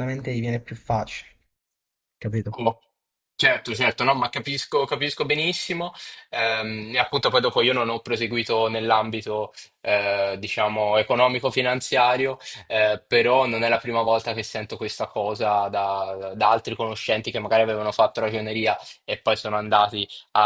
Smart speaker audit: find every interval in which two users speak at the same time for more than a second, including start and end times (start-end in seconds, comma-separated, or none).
none